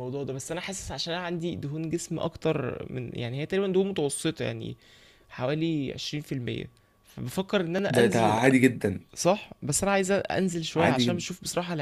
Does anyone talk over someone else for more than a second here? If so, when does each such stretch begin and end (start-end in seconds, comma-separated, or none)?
none